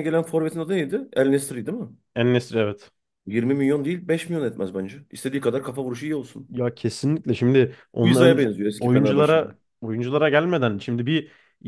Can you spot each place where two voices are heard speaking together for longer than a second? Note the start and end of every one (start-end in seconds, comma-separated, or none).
8.0-9.5